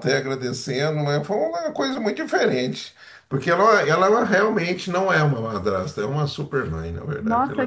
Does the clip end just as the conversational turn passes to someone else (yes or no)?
yes